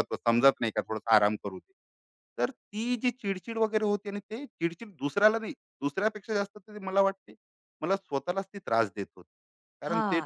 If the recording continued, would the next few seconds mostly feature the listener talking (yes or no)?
yes